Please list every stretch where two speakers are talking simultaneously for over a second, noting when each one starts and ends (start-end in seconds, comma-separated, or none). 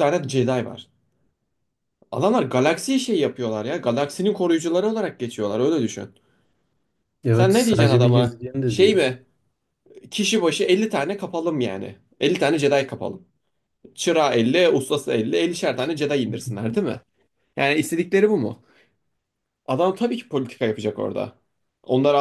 7.3-9.0